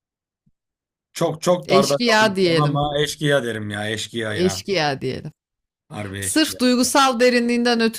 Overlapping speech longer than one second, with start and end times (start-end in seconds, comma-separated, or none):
1.6-2.9